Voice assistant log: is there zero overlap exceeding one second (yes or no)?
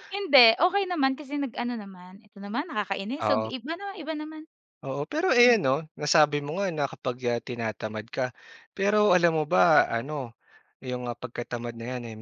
yes